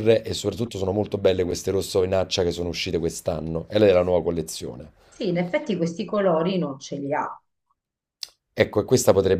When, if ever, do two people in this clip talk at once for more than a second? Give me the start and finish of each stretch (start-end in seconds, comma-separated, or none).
none